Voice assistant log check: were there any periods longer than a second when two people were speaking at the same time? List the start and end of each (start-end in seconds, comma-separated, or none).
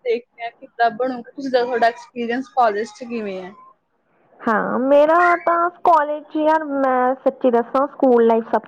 none